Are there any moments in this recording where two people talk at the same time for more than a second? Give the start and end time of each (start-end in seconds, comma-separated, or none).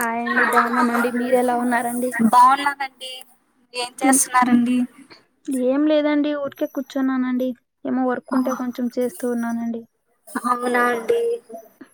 none